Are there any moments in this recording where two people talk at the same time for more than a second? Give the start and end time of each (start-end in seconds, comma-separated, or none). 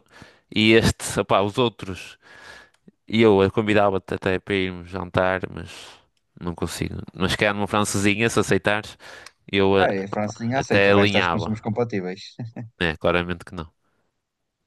9.8-11.6